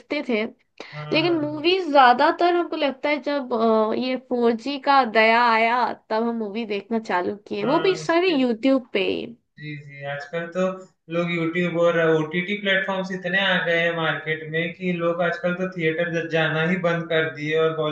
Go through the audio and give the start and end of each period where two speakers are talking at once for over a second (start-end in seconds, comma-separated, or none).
none